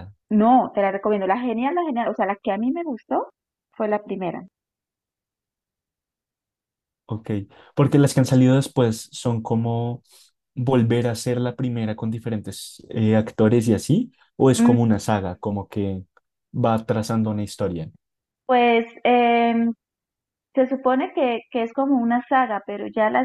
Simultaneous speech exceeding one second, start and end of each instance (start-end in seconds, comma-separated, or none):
none